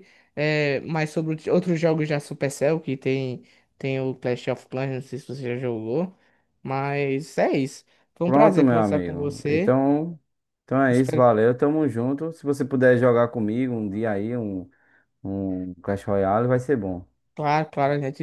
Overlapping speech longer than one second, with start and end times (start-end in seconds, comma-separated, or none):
8.2-9.8